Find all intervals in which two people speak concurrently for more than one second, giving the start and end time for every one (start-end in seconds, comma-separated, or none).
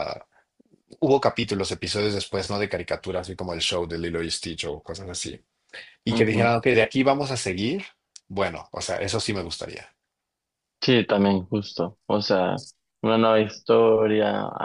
none